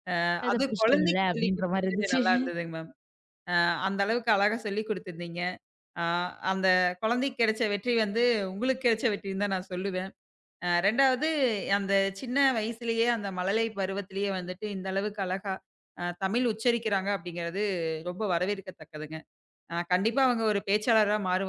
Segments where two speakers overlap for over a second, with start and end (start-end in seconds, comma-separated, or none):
0.5-2.2